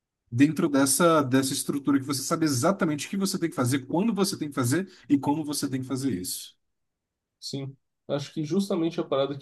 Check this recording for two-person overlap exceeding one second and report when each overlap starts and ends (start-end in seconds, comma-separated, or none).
none